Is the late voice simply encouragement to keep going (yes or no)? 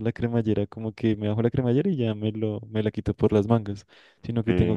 yes